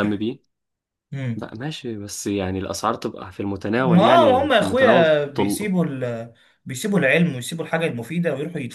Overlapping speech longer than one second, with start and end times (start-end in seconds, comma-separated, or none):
3.8-5.1